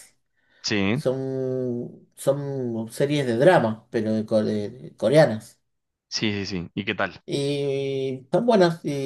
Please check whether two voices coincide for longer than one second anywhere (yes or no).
no